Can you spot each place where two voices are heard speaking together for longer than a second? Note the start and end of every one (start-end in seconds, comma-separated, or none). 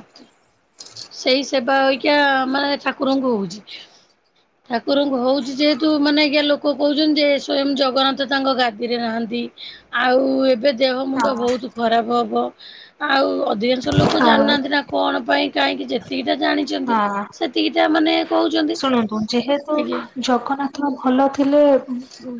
none